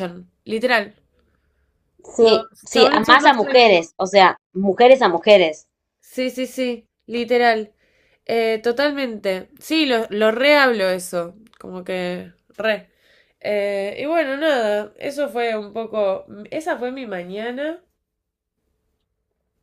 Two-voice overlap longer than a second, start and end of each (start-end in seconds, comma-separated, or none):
2.2-3.8